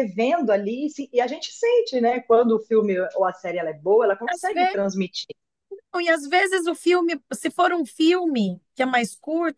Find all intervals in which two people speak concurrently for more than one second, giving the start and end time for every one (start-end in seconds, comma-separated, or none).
none